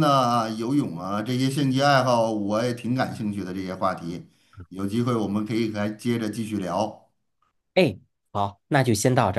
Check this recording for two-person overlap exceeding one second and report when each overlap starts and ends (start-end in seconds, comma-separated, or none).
none